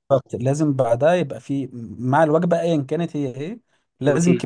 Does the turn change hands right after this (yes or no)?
no